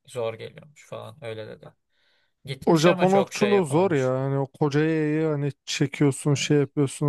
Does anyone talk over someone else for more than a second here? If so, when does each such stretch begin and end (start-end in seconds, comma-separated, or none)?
2.6-4.1